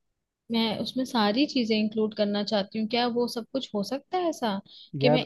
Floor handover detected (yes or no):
no